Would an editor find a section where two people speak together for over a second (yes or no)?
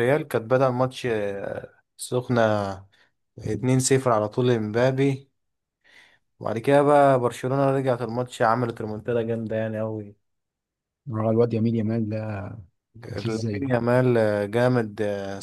no